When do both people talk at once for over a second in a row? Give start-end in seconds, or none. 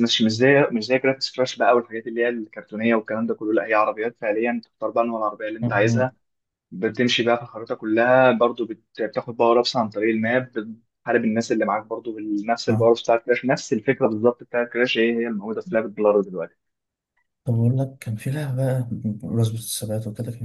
none